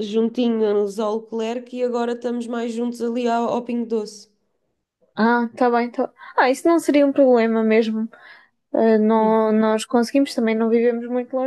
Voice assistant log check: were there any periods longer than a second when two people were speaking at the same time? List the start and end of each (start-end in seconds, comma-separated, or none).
none